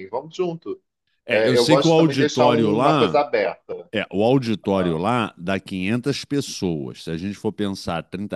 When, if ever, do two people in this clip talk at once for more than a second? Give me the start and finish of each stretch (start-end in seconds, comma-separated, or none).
1.3-3.2